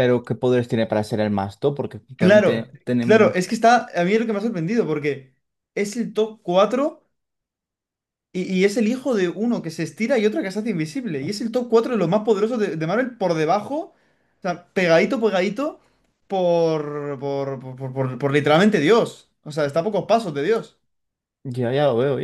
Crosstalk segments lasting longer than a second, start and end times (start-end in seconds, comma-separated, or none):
2.1-3.5